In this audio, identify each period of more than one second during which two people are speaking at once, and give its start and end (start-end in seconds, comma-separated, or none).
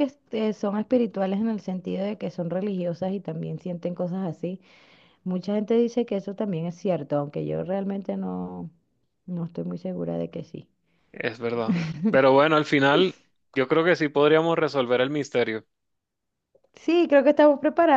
none